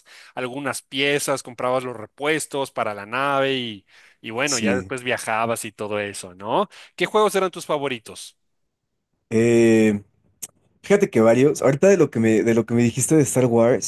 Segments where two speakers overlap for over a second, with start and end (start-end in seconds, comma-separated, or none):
none